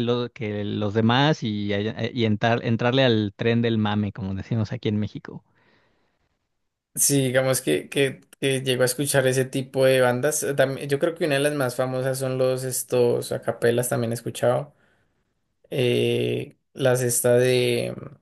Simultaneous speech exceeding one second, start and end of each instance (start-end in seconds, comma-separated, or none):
none